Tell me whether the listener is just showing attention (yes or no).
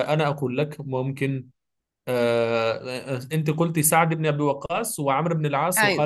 yes